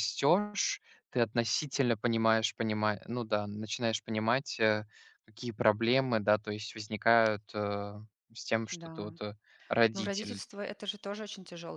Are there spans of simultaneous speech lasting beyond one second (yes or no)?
no